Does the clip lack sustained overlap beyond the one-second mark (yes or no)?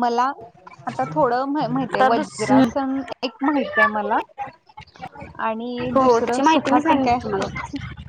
no